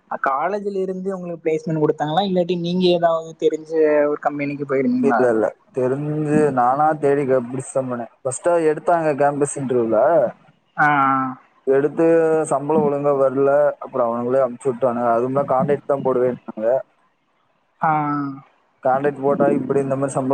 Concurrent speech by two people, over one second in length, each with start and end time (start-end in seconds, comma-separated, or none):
none